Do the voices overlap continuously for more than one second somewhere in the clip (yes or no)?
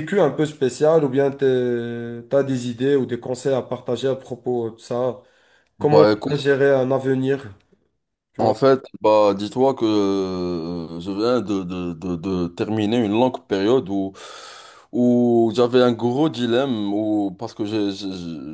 no